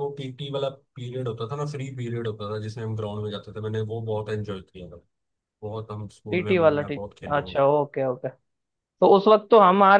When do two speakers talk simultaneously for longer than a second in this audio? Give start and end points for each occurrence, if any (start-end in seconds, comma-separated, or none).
6.3-7.6